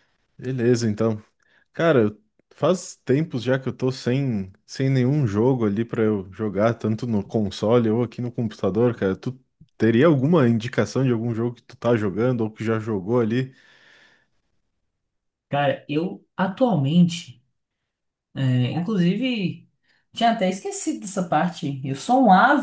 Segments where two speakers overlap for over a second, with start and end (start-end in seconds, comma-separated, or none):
none